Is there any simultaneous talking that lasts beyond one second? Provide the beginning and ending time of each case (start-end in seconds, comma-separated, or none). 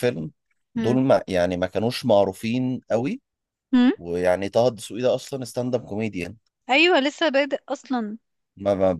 none